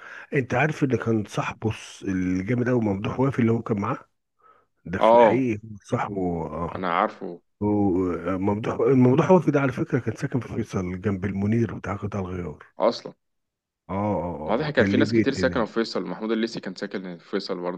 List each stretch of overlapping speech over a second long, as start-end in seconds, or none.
14.5-15.8